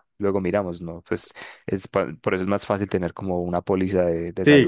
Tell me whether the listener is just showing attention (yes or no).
no